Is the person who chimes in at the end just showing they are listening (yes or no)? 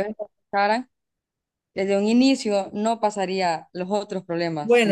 no